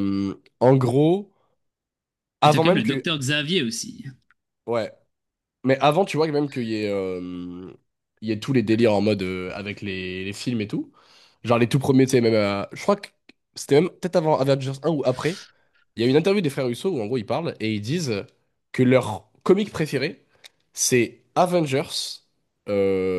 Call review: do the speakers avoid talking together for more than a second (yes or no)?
yes